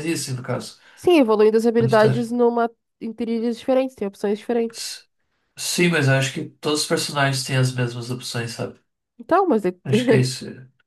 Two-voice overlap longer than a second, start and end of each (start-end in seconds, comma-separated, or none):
none